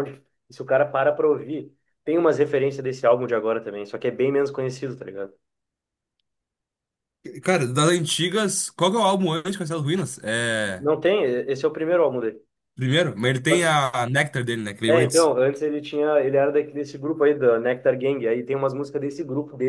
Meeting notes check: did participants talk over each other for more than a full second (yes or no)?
no